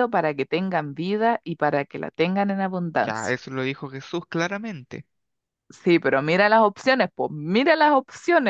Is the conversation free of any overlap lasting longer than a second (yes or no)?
yes